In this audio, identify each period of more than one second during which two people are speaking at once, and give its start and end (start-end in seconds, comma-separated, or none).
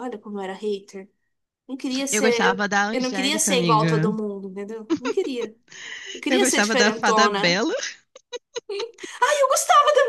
2.1-4.1, 6.3-7.6